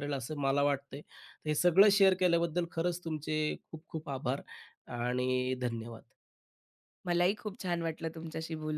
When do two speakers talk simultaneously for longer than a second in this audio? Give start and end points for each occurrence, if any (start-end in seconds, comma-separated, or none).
none